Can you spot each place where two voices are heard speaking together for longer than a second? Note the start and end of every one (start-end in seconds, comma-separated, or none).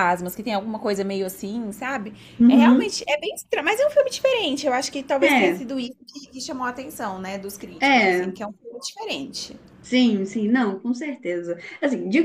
none